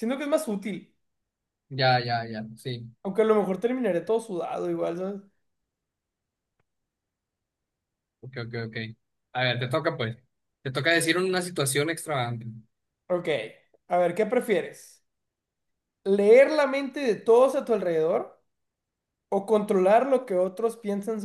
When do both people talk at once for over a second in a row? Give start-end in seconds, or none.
none